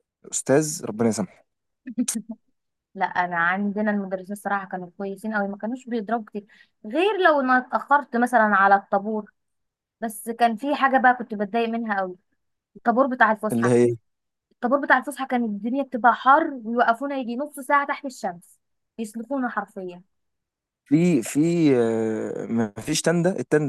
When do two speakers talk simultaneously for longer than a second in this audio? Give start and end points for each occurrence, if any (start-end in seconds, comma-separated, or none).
none